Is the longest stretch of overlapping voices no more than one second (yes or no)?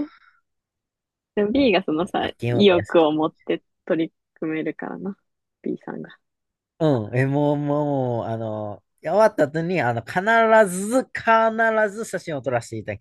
no